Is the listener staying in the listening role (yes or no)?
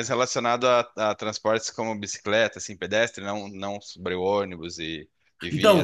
no